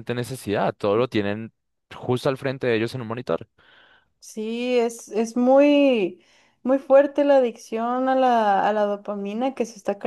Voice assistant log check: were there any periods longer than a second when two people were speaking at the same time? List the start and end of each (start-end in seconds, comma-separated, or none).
none